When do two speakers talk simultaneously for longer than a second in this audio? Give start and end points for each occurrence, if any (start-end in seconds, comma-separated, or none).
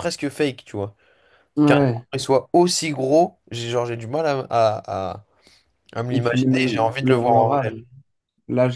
6.1-7.7